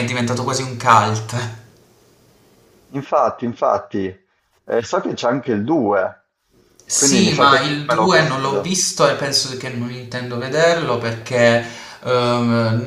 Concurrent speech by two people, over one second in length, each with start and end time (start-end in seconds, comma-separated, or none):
7.0-8.8